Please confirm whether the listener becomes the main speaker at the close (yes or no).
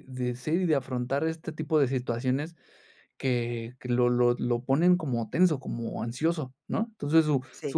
no